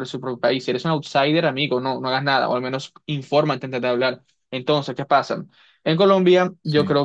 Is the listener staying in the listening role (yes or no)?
yes